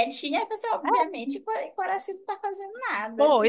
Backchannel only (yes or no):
no